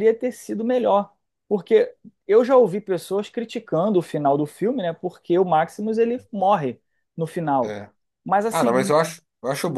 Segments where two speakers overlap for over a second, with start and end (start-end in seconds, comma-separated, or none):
none